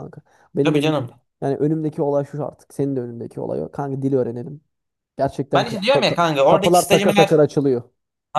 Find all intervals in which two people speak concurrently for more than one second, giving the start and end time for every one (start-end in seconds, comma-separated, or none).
5.5-7.4